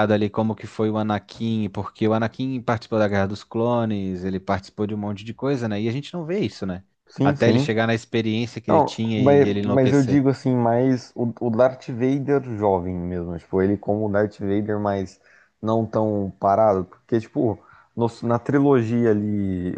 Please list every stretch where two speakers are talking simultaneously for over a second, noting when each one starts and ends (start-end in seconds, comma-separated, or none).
8.7-10.2